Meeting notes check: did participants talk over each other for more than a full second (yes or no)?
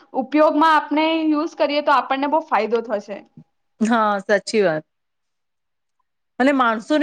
no